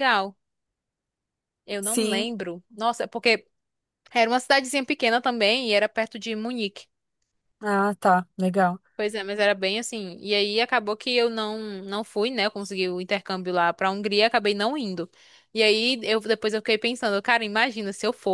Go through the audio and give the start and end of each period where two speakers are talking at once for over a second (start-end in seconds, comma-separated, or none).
none